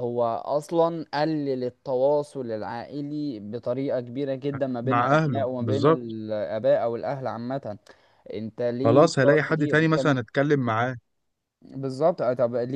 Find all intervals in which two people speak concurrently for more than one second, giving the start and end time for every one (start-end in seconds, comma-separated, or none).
4.8-6.2, 8.8-10.2